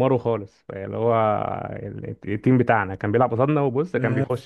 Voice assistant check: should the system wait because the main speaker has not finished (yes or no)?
yes